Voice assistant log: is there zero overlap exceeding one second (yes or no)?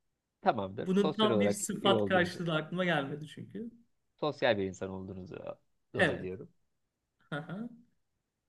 no